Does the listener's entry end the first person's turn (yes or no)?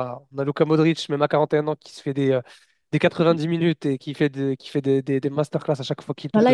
yes